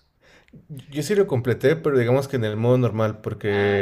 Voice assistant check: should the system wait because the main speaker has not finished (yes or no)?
yes